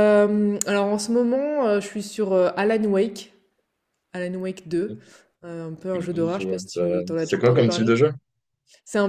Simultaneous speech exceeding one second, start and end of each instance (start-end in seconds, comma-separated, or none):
5.9-7.9